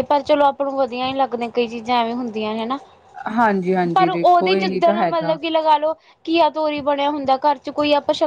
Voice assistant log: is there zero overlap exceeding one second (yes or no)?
no